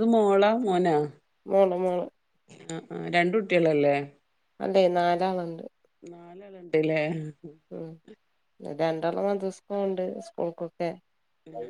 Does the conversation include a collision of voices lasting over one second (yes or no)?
no